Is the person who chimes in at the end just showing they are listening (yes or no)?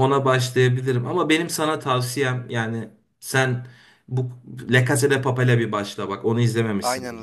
no